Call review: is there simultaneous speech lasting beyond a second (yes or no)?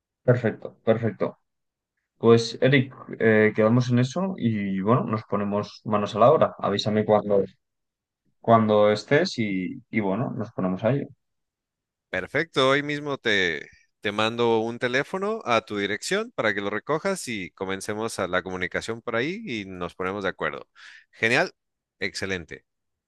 no